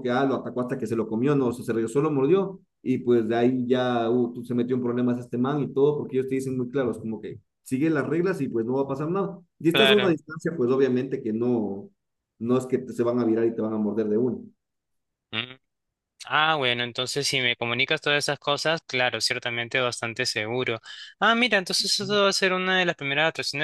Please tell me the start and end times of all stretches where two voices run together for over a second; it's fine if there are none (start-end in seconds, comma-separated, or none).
none